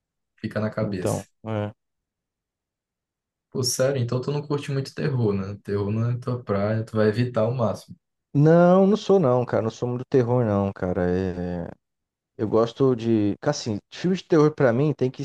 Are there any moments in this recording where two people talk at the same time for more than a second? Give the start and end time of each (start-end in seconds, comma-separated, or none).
none